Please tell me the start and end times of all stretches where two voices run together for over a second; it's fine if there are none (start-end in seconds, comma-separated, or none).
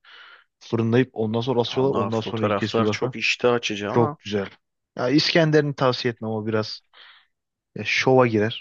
1.6-3.1